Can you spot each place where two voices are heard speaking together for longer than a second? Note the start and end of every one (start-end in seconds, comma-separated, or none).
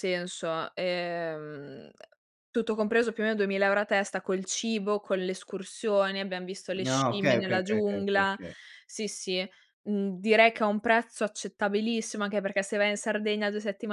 6.8-8.4